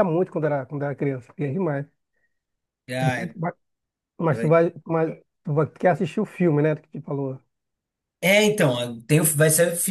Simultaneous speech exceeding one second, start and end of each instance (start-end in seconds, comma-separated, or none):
none